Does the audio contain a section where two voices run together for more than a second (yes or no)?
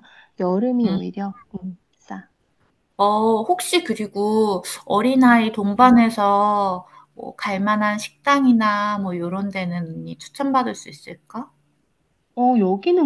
no